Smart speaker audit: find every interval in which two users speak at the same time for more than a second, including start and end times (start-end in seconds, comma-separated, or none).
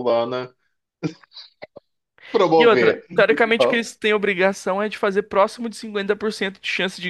2.5-3.8